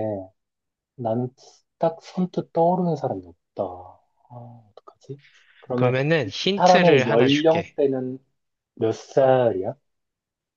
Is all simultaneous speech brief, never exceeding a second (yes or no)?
no